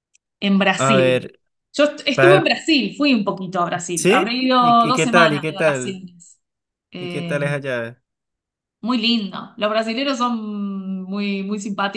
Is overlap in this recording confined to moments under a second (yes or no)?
no